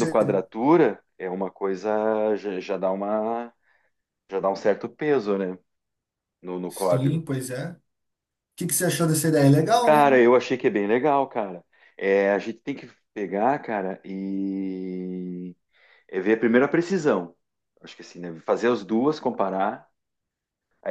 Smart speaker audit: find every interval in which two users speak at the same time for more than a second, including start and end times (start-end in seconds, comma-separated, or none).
none